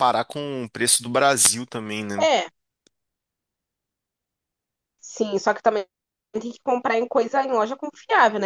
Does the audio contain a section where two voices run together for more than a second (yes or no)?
no